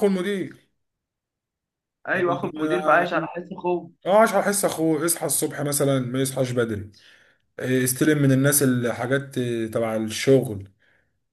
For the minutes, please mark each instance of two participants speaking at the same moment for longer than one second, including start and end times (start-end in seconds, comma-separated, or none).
none